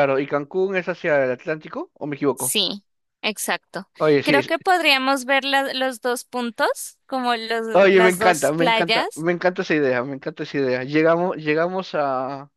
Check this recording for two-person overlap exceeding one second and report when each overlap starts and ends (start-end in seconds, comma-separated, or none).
7.7-9.2